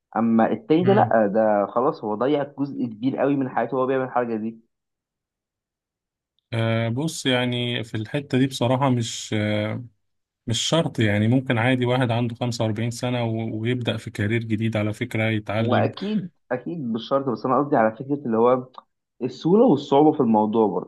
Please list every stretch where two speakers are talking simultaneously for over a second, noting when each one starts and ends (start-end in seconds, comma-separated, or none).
none